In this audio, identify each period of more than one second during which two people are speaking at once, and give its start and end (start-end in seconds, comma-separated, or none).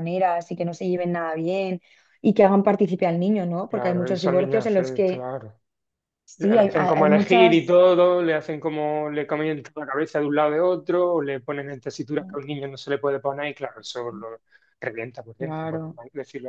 3.7-5.3, 6.4-7.8